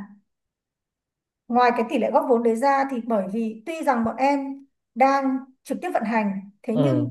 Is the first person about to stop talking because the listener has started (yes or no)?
no